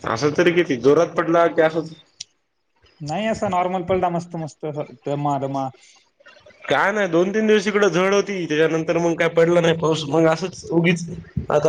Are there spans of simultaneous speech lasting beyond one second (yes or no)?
no